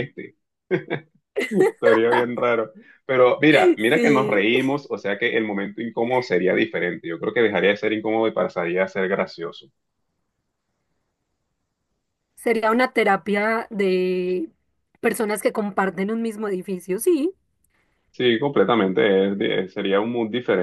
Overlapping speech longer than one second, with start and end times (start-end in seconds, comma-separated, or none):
none